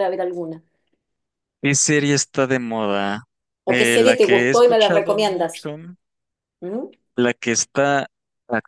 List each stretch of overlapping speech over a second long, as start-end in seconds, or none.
3.7-5.6